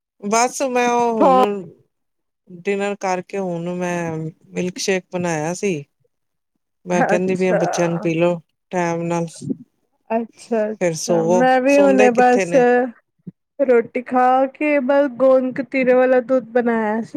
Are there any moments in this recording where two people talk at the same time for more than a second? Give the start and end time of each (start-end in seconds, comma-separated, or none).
10.8-12.5